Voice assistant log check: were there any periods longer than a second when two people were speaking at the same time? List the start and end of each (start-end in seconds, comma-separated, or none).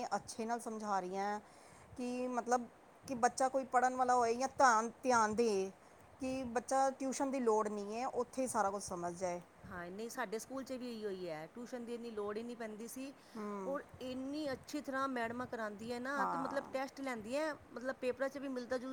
none